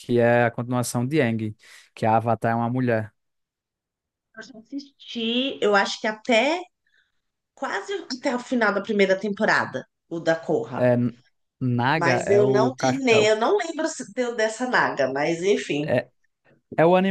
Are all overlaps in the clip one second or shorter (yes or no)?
no